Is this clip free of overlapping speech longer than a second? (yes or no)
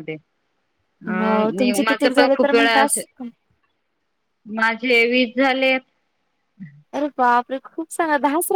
no